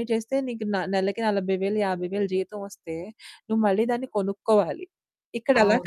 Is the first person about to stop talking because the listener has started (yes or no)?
no